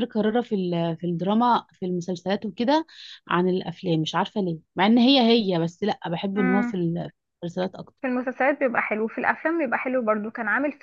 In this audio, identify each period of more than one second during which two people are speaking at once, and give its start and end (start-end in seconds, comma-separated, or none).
none